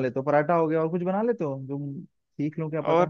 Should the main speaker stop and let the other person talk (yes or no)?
yes